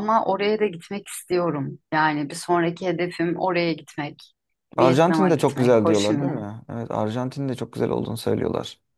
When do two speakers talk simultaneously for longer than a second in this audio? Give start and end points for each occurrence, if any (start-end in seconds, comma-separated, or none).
4.8-6.5